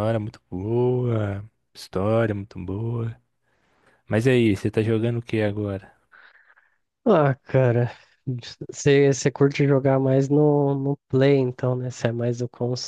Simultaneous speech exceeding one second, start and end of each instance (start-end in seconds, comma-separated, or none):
none